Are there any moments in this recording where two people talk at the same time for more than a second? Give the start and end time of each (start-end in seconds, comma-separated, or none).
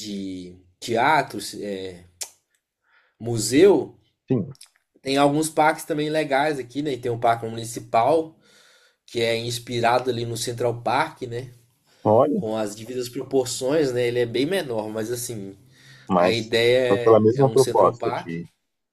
16.1-18.3